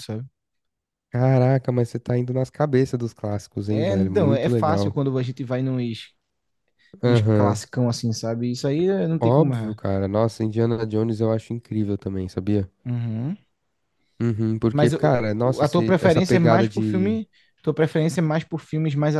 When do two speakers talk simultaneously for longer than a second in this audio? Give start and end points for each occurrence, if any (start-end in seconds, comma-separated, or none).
3.7-4.9, 14.7-17.2